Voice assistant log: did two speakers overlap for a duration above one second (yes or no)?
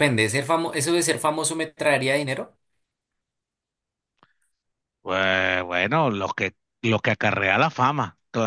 no